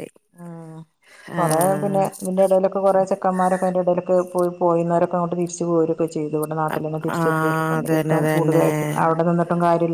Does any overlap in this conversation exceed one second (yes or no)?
yes